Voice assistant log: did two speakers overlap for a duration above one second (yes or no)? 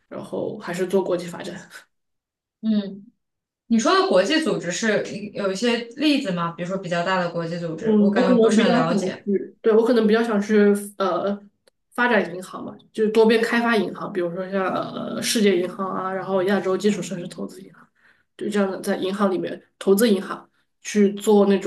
yes